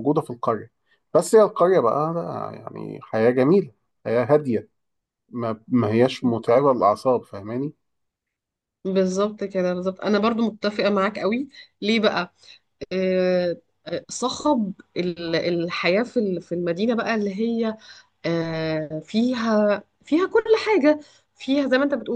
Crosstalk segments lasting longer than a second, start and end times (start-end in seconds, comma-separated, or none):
none